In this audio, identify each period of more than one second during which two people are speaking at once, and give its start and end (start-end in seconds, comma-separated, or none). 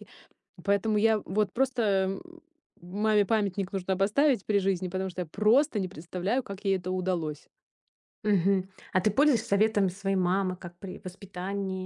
none